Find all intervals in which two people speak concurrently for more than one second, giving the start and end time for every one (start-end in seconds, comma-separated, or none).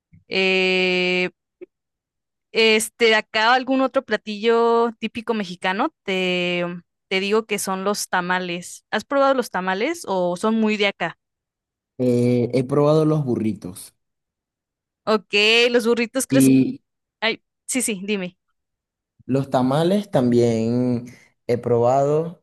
none